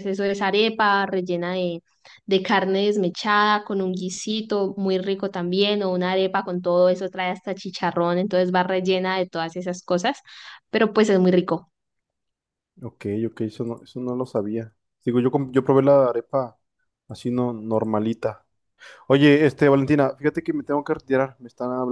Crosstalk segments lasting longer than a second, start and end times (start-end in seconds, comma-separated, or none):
none